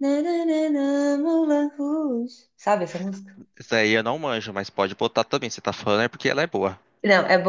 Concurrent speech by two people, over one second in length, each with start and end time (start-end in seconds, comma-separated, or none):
none